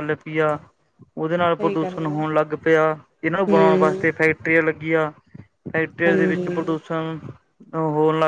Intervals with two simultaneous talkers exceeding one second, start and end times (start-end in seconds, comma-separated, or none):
none